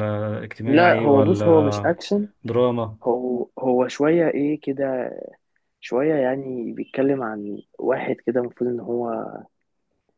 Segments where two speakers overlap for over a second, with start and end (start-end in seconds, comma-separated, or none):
0.7-1.9